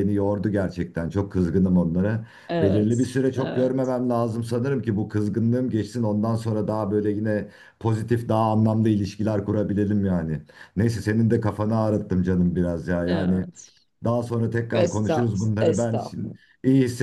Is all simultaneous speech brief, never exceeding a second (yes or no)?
no